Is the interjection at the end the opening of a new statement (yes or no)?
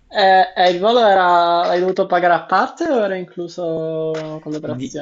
yes